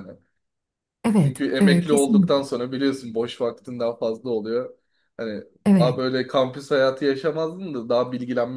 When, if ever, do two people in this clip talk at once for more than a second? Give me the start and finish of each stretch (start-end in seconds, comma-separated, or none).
1.2-2.5